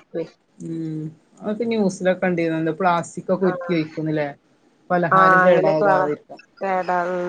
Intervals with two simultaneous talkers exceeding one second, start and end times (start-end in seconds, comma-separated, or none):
none